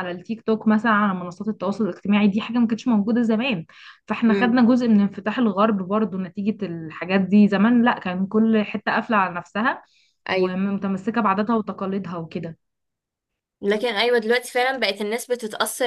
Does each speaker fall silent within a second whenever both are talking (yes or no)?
yes